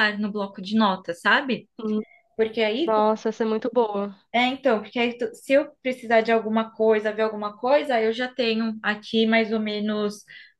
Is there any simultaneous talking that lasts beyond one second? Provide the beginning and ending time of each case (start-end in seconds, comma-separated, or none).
none